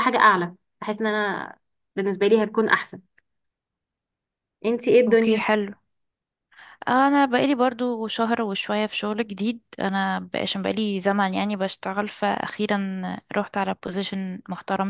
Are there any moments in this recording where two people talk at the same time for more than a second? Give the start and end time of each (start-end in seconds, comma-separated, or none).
none